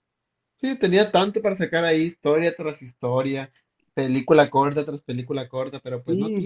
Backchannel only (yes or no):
no